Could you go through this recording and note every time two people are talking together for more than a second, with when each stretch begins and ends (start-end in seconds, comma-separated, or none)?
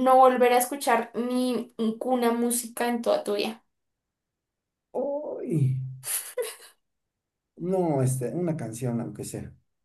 none